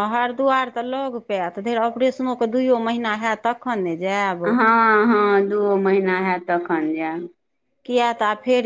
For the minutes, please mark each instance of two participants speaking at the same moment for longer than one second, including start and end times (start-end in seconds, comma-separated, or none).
none